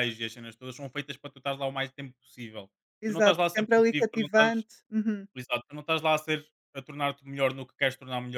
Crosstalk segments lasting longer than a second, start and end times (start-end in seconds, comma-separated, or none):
3.1-4.5